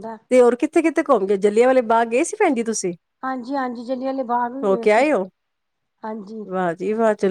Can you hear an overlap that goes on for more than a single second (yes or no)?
no